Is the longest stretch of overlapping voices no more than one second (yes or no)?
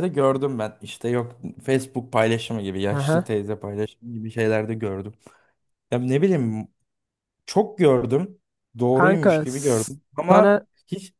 no